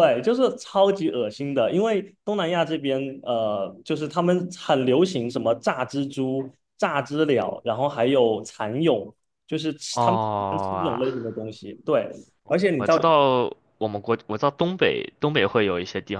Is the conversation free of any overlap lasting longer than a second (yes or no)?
no